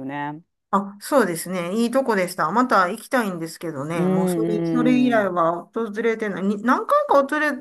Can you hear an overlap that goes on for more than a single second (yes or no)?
yes